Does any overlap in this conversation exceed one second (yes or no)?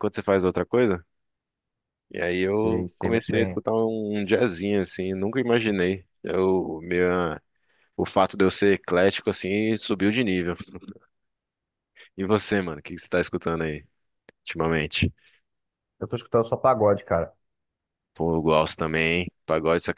yes